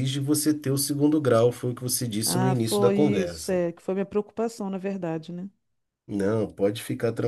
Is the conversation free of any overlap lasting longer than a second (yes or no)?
no